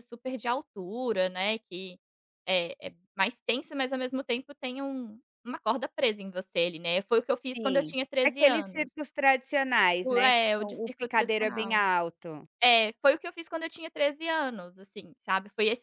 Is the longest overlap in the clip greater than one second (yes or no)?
yes